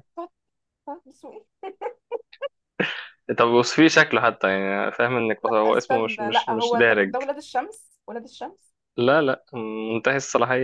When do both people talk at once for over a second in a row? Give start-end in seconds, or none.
5.4-7.2